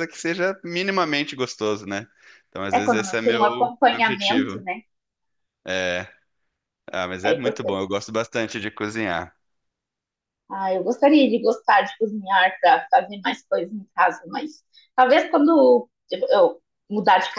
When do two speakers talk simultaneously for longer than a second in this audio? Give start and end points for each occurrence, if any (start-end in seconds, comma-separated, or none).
2.7-4.6